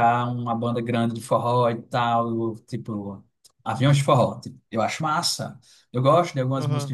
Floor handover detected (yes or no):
no